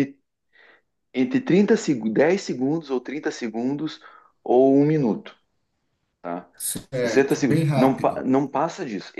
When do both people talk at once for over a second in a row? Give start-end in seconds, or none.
6.9-8.2